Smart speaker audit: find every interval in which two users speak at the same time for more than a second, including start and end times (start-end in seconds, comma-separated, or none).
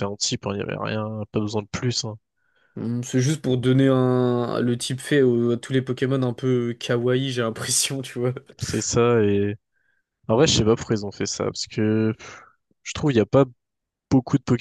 none